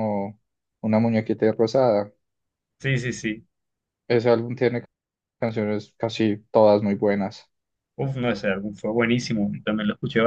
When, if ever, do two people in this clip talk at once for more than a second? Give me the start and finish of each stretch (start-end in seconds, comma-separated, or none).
none